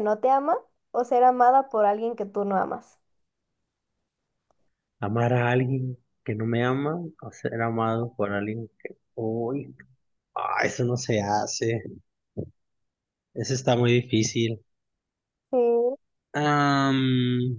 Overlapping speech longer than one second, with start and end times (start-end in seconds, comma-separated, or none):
none